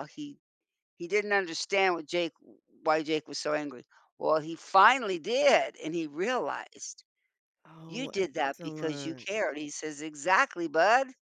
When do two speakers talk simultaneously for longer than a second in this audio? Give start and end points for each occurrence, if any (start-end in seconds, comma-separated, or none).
7.9-9.3